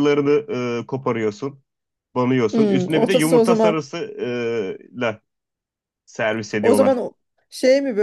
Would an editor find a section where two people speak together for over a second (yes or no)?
yes